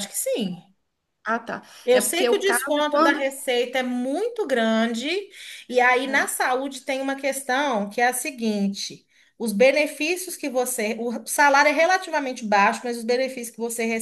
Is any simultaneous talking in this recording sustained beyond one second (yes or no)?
yes